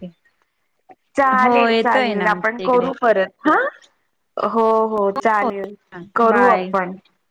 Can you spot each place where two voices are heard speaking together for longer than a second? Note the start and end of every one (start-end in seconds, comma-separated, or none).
1.4-2.9